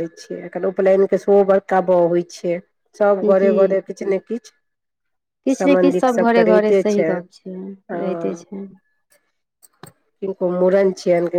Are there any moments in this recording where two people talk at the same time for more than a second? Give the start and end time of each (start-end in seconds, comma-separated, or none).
5.5-7.1